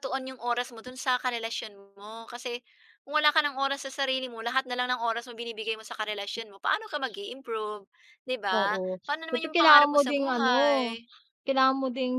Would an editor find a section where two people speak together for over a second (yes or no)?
yes